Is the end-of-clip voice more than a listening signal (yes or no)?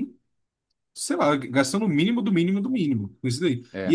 no